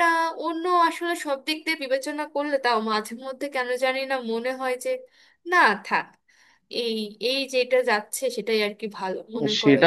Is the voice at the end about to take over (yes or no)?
yes